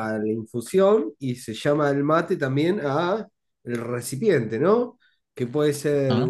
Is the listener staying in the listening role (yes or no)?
yes